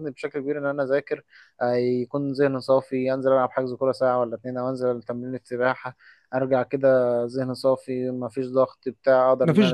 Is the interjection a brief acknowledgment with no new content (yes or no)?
no